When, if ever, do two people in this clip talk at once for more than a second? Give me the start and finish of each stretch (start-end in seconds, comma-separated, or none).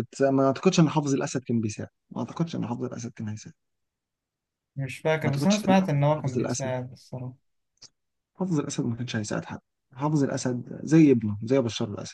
5.2-6.7